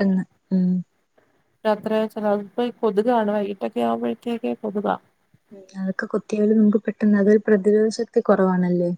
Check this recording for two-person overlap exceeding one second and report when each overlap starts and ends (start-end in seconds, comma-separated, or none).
none